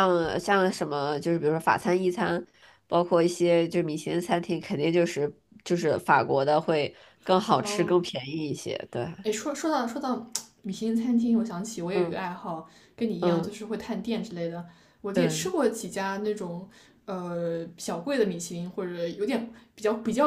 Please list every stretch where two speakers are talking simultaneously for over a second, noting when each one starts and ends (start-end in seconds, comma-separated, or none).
none